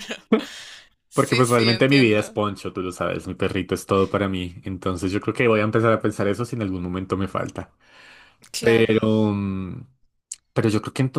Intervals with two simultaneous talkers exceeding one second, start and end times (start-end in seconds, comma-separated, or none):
1.1-2.4